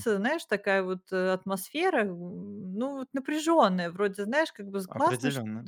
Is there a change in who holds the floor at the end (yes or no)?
no